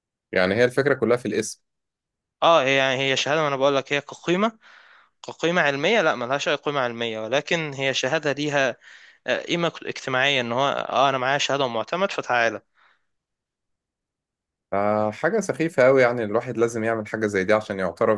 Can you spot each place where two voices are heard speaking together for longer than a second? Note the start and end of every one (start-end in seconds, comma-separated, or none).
none